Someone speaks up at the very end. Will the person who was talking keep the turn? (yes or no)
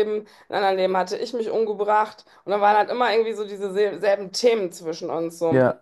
yes